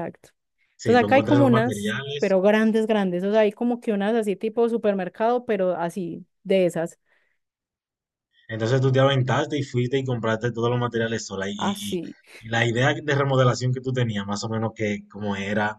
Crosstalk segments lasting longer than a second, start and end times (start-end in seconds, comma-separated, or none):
0.8-2.4